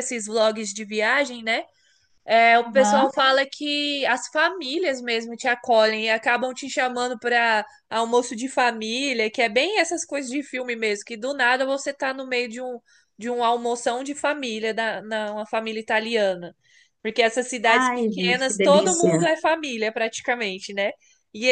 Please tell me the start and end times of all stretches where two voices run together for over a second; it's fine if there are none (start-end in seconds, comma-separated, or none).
17.7-19.3